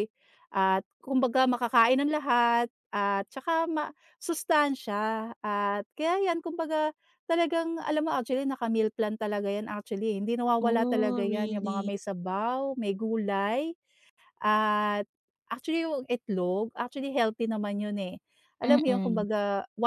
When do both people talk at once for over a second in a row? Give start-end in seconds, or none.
10.6-11.9